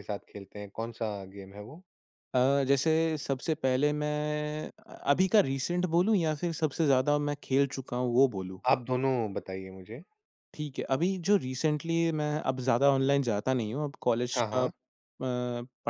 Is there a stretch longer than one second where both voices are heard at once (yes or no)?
no